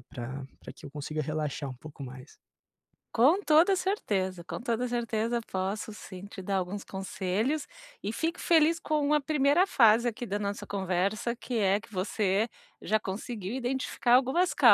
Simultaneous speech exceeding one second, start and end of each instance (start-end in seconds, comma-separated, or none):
none